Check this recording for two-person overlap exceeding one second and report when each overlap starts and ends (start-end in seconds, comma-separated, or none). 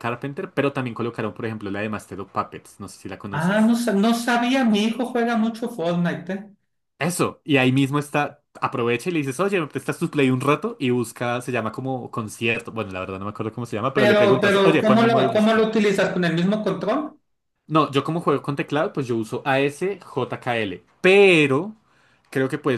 13.9-15.7